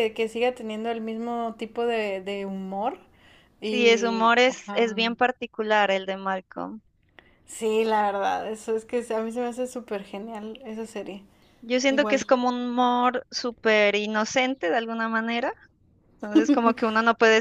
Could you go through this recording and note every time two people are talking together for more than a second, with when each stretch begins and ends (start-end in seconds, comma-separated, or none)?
3.6-4.8